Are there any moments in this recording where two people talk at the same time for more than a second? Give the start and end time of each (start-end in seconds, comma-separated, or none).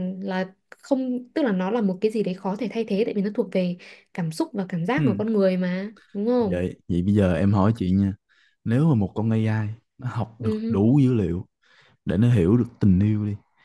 none